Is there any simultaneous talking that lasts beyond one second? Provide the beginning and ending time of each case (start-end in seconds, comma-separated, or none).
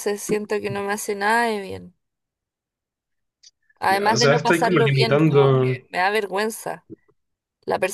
3.9-5.8